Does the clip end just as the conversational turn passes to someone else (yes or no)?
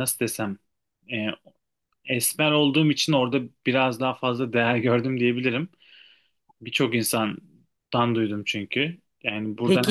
yes